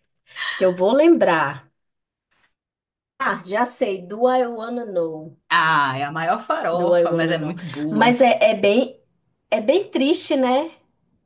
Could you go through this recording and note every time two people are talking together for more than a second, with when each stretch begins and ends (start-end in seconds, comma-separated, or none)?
6.7-8.2